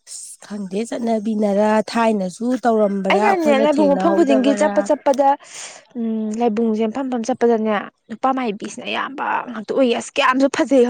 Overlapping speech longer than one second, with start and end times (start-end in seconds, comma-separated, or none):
3.1-4.7